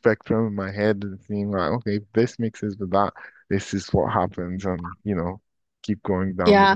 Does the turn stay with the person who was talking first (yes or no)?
no